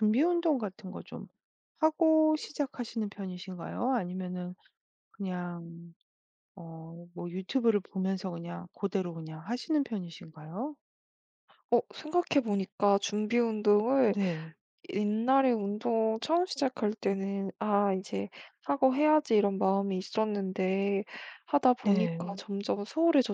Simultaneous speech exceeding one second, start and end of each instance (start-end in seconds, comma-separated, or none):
none